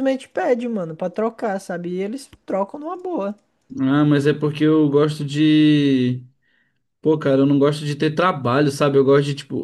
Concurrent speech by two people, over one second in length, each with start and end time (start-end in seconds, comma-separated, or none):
none